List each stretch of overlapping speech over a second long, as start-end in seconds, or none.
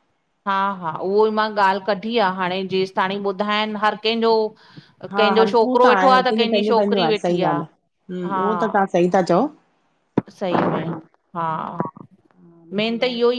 5.1-7.5